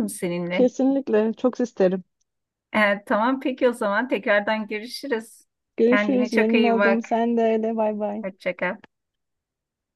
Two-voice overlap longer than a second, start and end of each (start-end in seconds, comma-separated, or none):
5.9-7.1